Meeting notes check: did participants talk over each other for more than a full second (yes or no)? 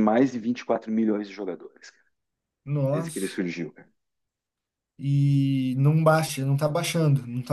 no